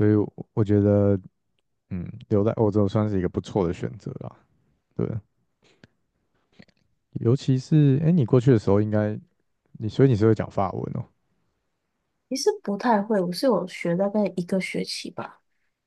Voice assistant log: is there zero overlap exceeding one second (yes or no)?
yes